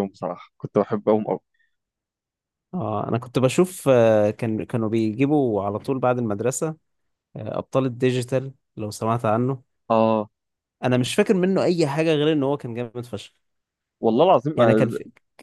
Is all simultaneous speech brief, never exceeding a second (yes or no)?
yes